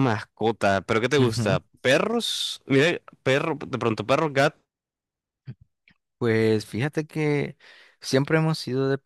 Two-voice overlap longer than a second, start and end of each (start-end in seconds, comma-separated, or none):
none